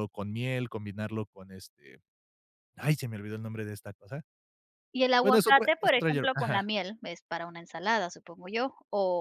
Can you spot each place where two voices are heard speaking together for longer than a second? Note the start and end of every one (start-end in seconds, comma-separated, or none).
5.2-6.7